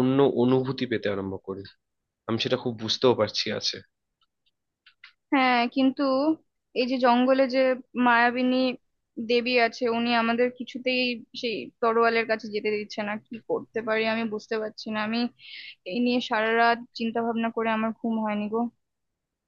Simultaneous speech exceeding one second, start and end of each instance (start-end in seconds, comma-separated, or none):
none